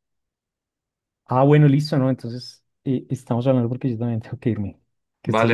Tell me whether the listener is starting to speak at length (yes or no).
yes